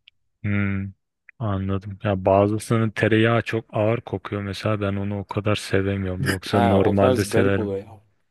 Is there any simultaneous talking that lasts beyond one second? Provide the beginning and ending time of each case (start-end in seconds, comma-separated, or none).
6.5-7.7